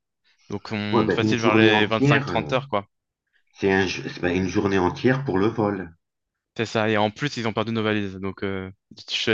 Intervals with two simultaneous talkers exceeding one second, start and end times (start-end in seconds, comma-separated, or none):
0.9-2.5